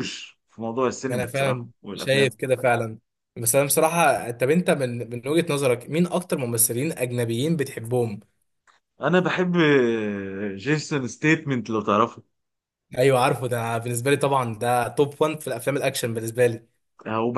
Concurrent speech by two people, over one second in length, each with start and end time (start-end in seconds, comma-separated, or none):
1.1-2.4